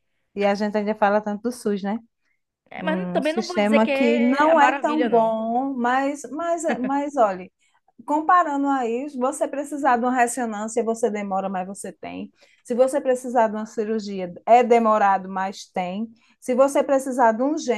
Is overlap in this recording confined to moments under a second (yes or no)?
no